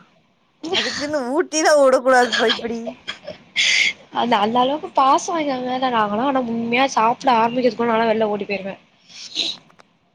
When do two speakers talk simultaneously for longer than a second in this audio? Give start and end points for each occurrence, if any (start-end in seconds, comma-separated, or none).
none